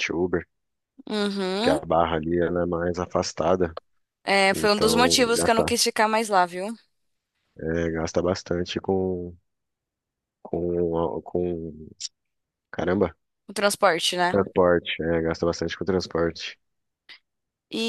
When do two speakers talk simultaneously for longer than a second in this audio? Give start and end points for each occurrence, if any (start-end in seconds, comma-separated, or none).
4.5-5.8